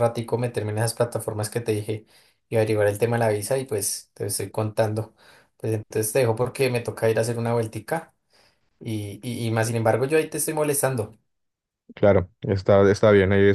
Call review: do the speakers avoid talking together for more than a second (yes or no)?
yes